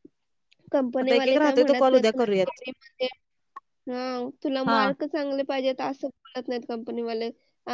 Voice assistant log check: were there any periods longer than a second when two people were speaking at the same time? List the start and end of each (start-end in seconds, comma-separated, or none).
1.0-2.6